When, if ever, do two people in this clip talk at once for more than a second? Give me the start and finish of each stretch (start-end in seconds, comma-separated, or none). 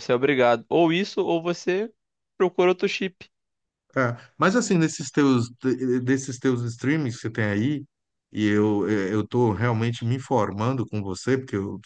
none